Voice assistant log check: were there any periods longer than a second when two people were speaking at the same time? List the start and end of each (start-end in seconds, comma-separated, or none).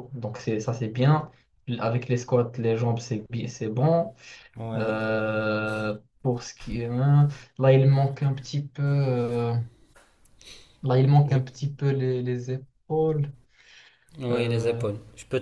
none